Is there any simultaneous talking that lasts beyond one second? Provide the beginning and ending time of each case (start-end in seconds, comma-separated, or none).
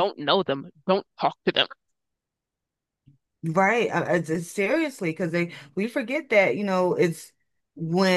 none